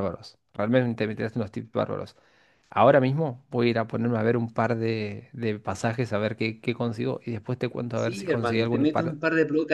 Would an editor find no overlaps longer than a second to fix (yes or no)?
no